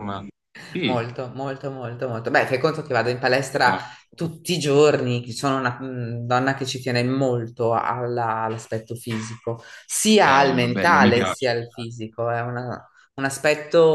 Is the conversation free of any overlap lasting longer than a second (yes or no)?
no